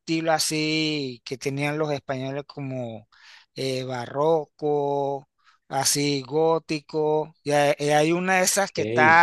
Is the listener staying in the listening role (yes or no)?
yes